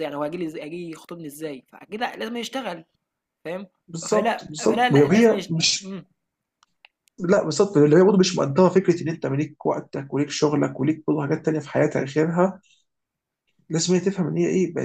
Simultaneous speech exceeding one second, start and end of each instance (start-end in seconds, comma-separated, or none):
4.1-6.0